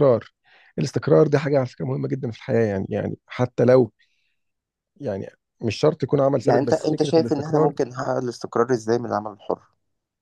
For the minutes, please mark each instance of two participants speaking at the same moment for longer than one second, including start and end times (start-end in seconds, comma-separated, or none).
6.5-7.7